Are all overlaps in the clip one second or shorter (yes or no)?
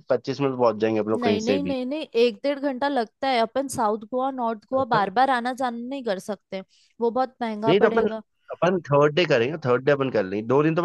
yes